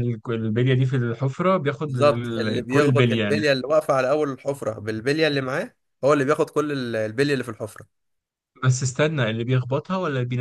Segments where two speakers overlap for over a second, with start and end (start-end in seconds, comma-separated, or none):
1.9-3.5